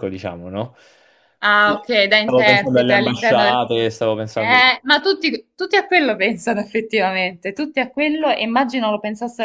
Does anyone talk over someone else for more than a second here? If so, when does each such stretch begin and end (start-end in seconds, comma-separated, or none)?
1.6-3.6